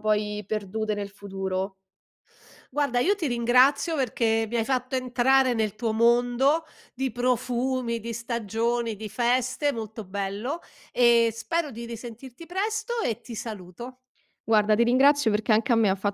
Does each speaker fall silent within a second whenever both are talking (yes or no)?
yes